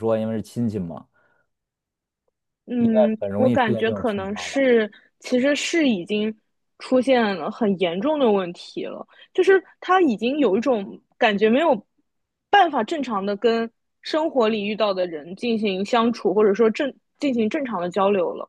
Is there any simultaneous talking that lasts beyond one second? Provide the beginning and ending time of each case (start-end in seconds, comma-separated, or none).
3.2-4.6